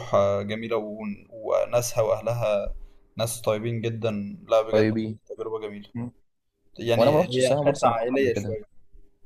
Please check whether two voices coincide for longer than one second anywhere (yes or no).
yes